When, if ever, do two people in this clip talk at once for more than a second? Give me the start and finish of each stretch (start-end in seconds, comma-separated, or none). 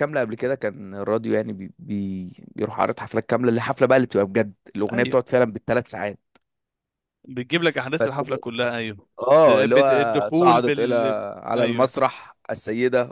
9.4-10.9